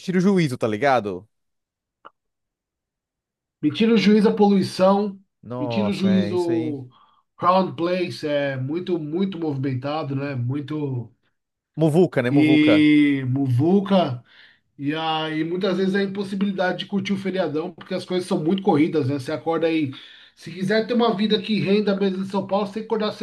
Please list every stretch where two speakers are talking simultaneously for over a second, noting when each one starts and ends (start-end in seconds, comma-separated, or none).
5.6-6.8